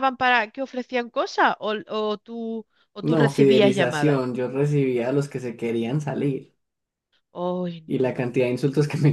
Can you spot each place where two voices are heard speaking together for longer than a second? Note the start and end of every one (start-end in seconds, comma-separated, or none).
3.0-4.2